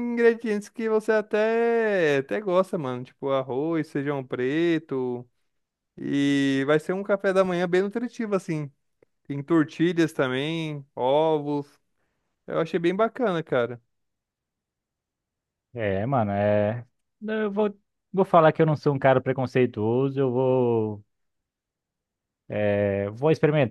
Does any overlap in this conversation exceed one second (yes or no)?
no